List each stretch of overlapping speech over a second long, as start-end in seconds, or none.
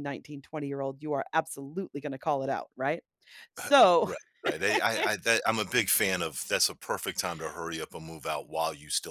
none